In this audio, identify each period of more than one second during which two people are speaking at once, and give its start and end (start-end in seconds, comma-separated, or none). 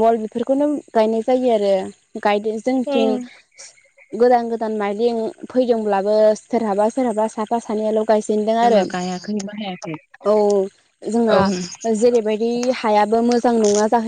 none